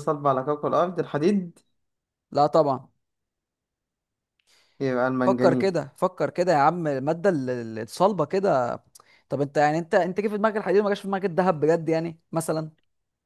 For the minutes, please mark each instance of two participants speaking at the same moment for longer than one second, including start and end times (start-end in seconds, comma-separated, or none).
none